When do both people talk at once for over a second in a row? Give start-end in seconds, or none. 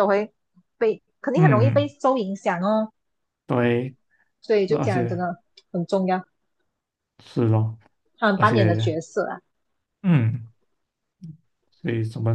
none